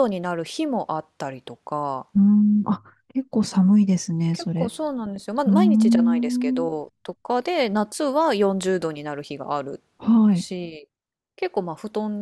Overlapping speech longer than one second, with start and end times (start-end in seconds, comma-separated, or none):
5.5-6.7